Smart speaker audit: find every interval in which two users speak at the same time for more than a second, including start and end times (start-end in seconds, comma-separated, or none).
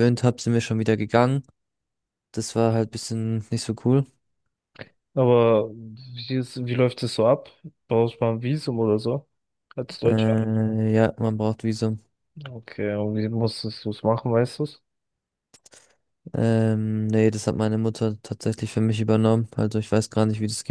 none